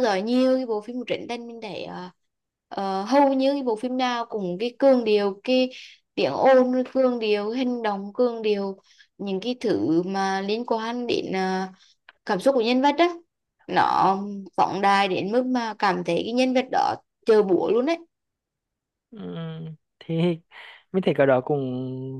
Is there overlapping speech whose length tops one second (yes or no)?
no